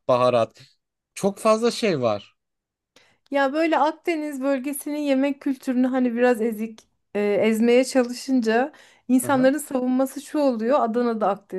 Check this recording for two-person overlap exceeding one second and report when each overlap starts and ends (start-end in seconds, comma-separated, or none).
none